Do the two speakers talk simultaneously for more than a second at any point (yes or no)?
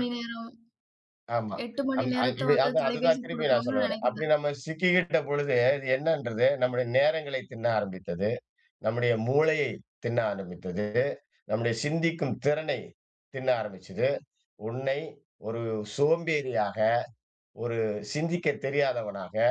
yes